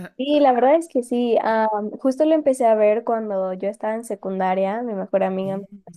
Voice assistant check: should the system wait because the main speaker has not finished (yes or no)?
yes